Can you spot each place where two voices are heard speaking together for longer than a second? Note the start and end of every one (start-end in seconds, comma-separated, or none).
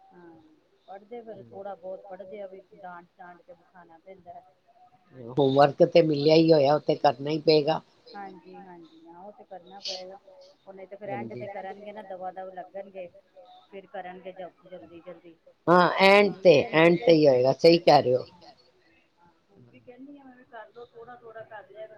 none